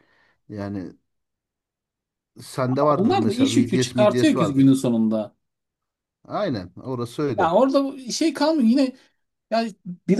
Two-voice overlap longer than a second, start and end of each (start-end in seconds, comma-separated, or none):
3.0-4.8